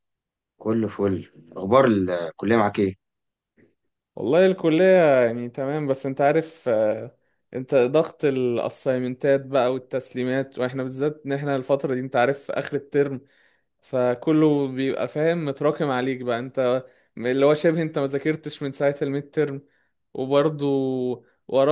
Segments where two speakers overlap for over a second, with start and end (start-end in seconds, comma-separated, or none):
none